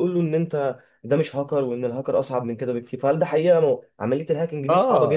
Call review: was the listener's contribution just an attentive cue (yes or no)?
no